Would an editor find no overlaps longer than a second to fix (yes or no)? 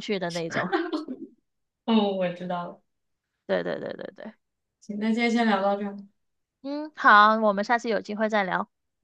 yes